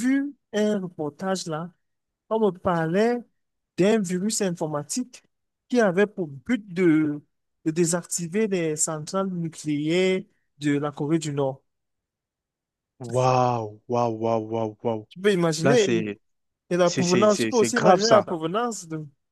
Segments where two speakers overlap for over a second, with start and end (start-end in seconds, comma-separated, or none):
16.8-18.3